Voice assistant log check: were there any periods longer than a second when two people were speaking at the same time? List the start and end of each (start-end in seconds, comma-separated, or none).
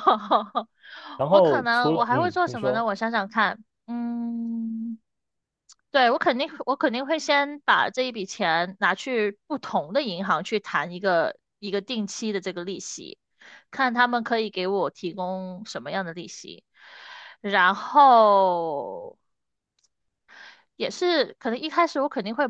1.3-2.9